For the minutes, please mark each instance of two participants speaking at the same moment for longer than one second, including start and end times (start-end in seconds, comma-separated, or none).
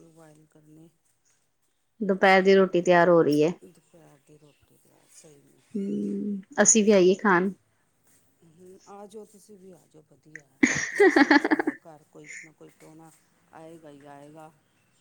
none